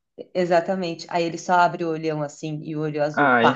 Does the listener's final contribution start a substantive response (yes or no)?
yes